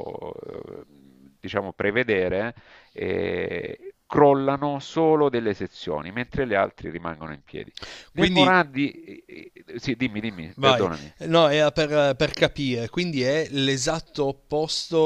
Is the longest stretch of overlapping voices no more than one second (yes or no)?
yes